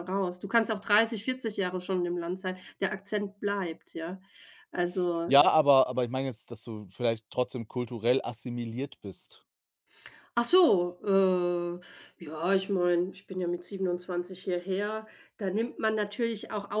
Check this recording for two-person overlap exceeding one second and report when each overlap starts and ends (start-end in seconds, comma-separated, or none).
none